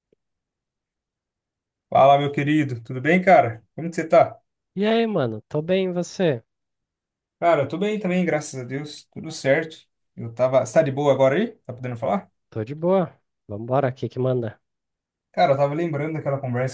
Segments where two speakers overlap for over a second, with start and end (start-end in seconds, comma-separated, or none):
none